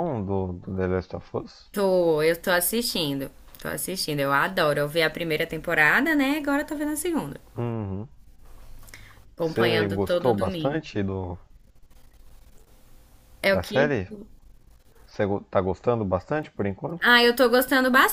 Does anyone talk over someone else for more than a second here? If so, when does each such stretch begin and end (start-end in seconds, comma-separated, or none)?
9.4-10.8